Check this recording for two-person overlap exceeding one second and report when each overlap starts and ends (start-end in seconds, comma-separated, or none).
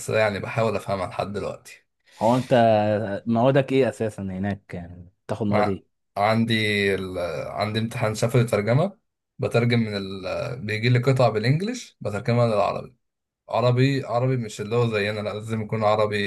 none